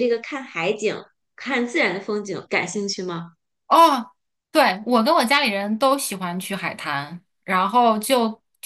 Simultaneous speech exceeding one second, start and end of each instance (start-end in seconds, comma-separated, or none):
none